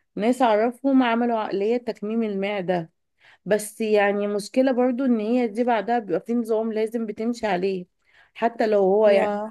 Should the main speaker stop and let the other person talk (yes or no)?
no